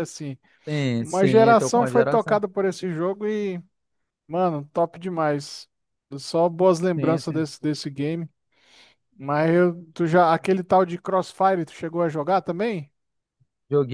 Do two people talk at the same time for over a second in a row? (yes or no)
yes